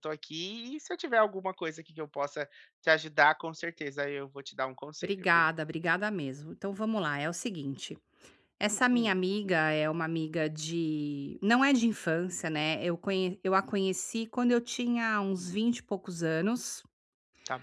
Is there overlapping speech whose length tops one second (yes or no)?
no